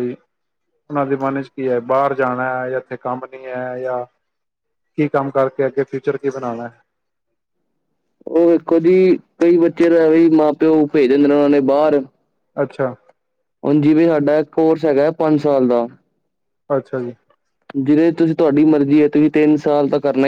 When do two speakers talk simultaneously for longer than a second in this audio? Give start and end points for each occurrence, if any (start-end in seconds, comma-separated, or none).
none